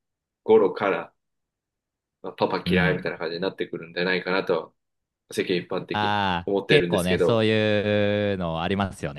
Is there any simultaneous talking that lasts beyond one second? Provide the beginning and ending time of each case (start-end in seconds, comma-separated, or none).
5.9-7.5